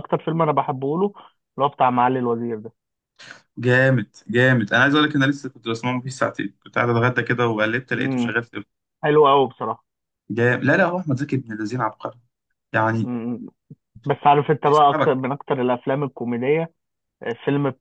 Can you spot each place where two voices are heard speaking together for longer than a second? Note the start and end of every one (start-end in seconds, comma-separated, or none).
none